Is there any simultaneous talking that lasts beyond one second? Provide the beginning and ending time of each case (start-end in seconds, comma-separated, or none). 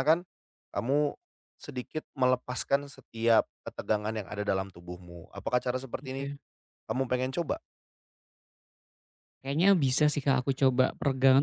none